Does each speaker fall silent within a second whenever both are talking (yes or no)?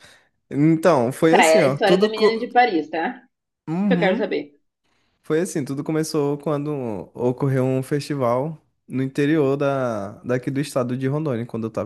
no